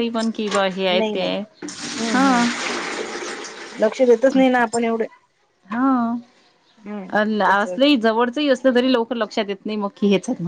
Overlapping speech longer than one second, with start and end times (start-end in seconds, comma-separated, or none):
none